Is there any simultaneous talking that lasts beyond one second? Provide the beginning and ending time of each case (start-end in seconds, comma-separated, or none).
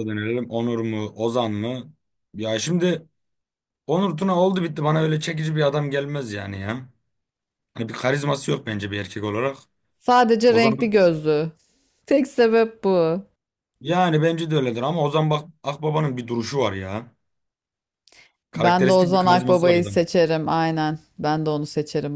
18.6-20.0